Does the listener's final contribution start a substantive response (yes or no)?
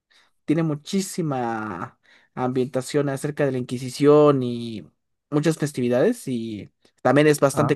no